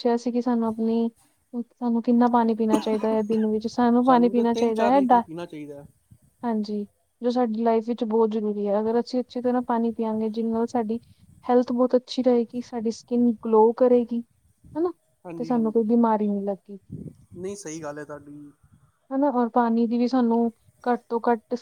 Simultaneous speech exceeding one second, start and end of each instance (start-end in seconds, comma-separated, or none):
none